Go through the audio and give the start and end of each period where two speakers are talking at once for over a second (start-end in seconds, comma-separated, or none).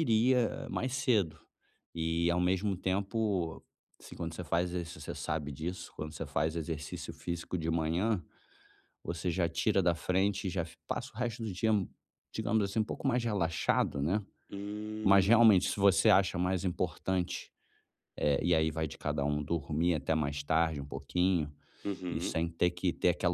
none